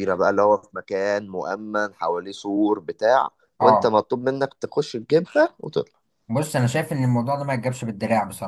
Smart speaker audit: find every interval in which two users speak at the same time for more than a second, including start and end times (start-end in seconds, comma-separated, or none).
none